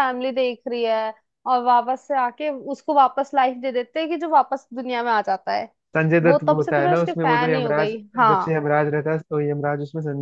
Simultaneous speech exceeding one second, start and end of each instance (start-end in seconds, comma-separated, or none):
6.2-8.6